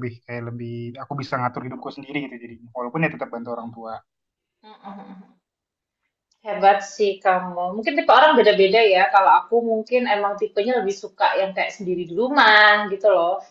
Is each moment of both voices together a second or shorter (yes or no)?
yes